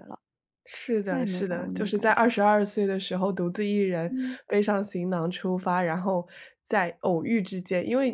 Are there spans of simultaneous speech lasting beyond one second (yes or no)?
yes